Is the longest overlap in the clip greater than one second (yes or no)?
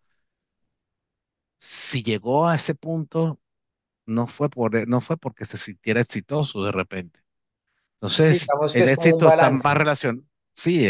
yes